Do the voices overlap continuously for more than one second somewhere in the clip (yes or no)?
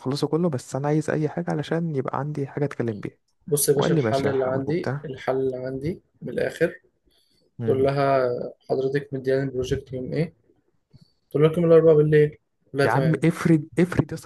yes